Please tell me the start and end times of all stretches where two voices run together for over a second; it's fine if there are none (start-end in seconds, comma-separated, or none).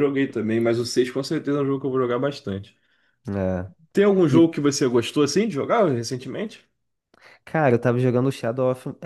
none